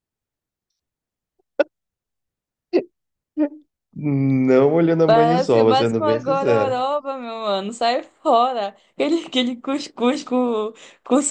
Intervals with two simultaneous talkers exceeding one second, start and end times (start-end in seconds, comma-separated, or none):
5.0-6.8